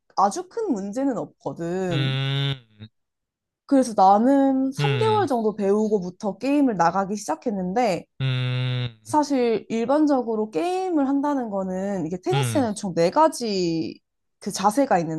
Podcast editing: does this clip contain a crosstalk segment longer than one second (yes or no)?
no